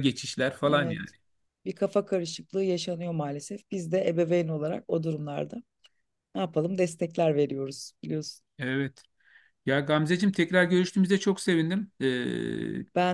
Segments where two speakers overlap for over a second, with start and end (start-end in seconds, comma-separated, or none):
none